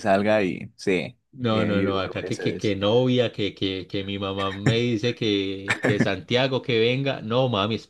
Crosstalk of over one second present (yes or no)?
yes